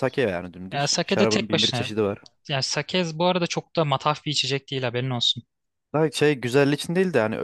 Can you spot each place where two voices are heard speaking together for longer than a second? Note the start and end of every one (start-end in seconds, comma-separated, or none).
0.7-1.9